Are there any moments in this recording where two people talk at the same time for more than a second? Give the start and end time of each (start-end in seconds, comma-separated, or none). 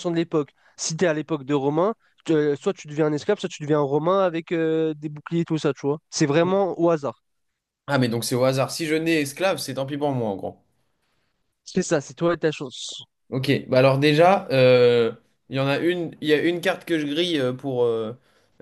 none